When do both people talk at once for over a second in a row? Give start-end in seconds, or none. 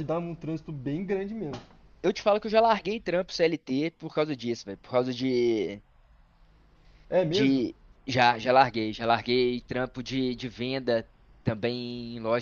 none